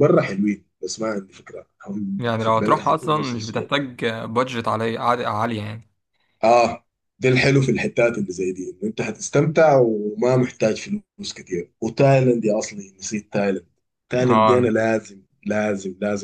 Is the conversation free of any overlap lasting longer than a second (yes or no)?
no